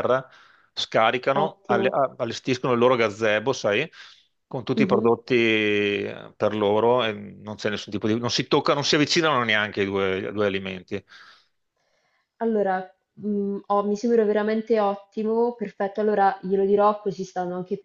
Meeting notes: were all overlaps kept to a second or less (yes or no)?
yes